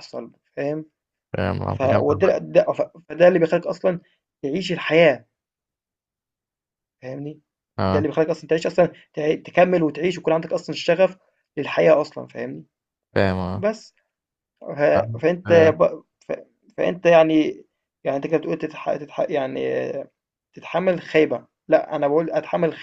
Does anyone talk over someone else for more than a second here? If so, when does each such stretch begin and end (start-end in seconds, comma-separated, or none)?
none